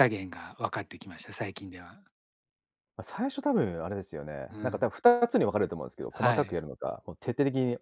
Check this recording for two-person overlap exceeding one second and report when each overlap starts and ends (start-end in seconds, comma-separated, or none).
none